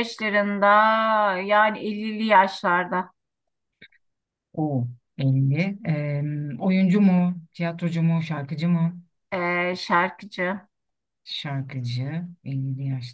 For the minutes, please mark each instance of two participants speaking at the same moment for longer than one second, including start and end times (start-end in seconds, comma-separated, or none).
none